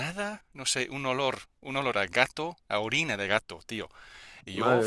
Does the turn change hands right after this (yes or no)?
no